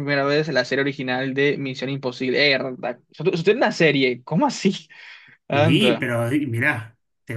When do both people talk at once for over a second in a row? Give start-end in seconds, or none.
none